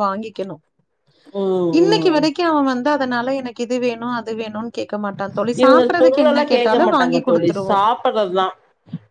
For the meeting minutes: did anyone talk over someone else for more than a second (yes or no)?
yes